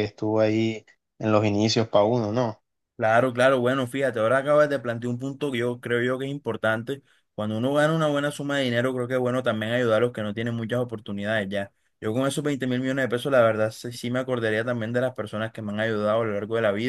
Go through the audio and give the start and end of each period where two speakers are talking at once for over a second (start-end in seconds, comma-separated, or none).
none